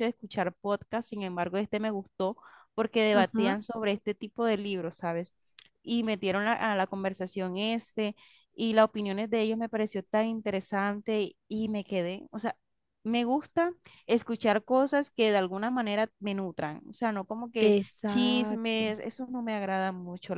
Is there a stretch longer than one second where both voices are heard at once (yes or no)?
yes